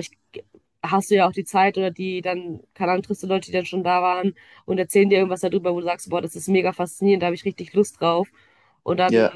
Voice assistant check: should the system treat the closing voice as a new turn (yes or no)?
no